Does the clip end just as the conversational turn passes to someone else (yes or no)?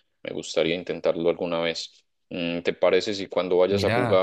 no